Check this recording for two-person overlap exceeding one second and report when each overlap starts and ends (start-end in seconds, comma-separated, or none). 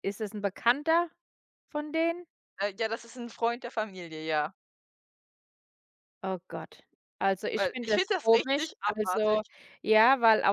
7.5-9.4